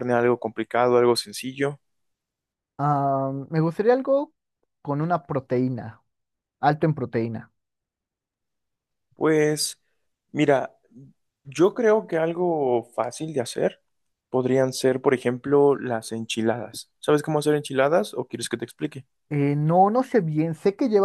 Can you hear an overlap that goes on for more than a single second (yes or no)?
no